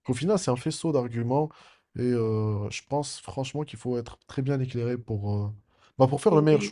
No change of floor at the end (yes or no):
no